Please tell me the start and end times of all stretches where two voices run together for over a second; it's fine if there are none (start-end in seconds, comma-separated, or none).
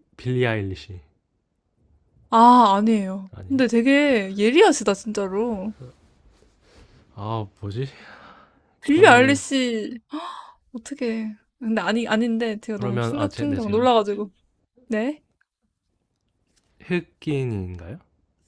12.7-13.9